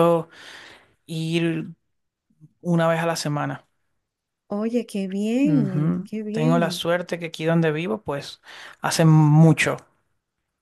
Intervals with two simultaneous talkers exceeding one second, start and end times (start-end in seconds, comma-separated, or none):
5.4-6.8